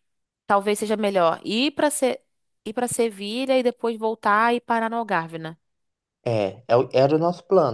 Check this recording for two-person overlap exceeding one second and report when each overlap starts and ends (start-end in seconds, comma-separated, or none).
none